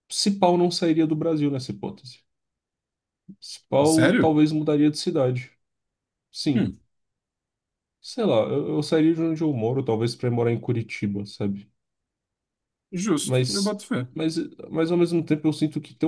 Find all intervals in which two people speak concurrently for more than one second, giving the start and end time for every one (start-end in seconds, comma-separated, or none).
none